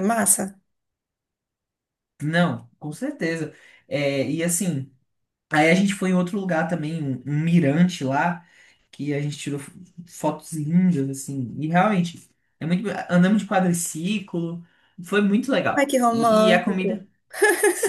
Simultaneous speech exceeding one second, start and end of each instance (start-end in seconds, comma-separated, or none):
15.8-17.1